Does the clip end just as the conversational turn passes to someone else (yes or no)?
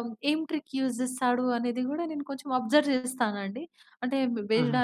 no